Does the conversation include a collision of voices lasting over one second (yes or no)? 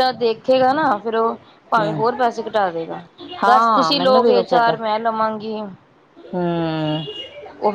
yes